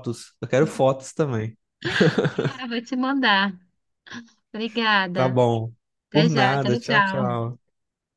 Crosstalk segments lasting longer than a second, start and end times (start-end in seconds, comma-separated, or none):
6.1-7.5